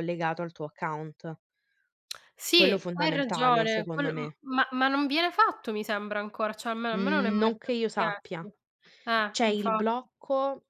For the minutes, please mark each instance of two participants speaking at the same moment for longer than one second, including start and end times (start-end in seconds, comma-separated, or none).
2.6-4.3, 6.9-8.5